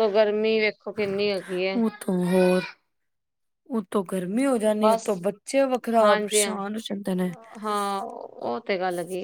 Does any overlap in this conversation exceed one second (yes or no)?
no